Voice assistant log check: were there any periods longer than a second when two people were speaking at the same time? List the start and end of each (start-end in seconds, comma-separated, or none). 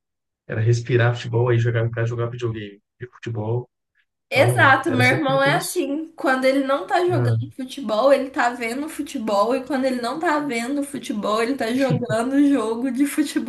4.3-5.8